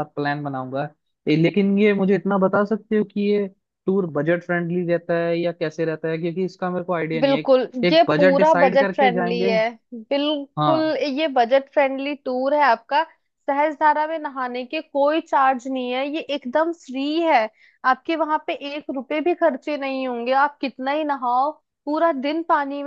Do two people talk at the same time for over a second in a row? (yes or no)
yes